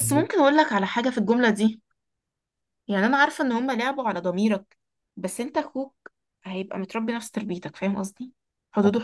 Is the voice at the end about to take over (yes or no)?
no